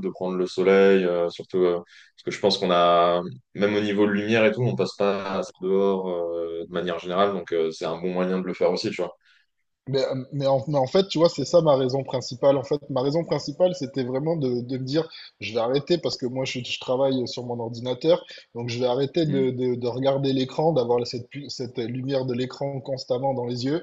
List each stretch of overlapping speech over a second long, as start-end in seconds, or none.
none